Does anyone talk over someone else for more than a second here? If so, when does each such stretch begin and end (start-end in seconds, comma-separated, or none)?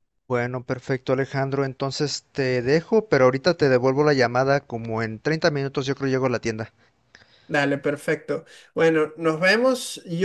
none